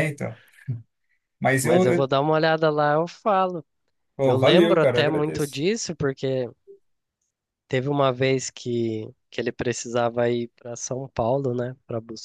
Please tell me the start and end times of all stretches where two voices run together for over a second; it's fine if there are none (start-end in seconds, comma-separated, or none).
4.2-5.6